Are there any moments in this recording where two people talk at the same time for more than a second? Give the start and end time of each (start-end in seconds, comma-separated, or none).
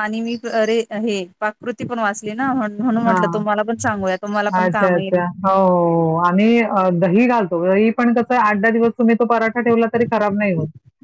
none